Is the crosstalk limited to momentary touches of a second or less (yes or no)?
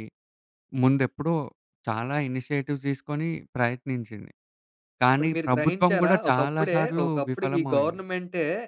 no